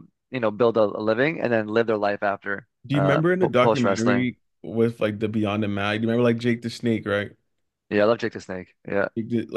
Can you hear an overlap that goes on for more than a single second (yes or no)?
yes